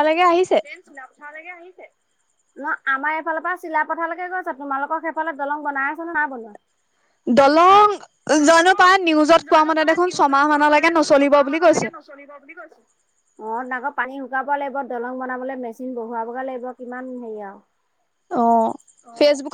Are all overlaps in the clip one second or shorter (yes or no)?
no